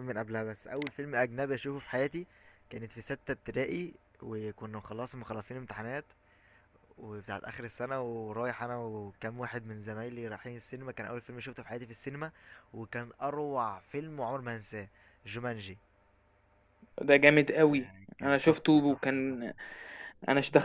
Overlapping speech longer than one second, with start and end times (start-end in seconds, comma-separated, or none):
17.7-19.5